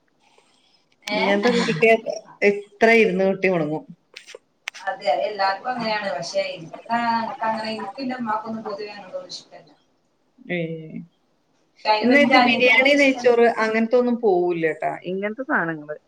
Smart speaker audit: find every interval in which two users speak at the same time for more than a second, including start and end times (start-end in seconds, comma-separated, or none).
12.0-13.3